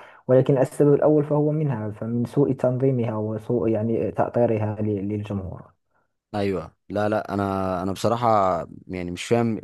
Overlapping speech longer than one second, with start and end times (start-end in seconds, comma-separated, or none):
none